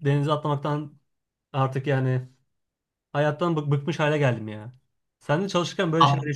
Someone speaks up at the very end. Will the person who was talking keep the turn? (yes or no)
yes